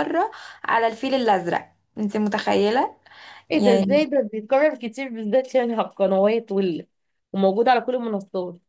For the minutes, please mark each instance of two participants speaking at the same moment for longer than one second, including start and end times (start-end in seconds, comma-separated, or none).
none